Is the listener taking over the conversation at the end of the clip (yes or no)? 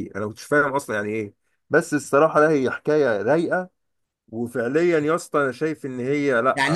yes